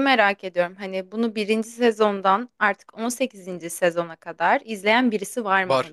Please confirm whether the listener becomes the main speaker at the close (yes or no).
yes